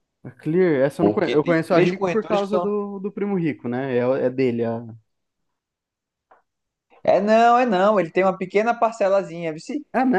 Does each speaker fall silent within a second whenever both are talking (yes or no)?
no